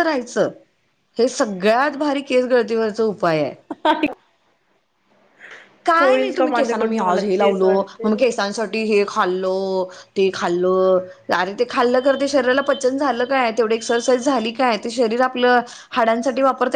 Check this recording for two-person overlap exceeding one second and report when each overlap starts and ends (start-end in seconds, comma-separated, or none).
6.4-8.1